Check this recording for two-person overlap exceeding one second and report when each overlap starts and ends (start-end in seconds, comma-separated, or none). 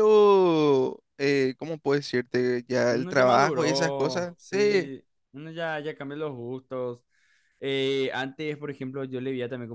2.9-4.9